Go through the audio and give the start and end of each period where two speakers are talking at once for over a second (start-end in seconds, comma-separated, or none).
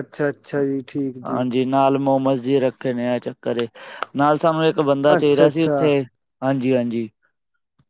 none